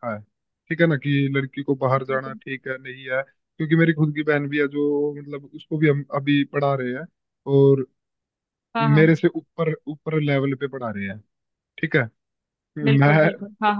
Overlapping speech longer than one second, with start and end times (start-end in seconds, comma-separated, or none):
none